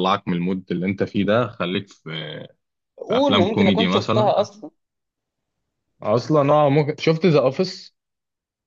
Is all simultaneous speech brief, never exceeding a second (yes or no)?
no